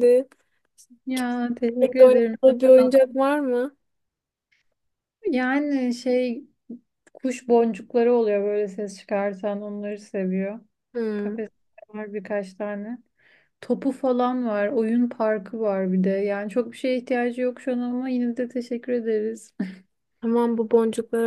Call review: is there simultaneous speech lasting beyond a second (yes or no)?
yes